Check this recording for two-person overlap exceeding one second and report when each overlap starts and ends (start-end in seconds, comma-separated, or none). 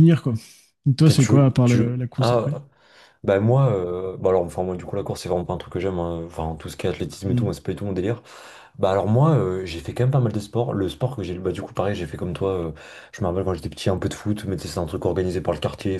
1.0-2.6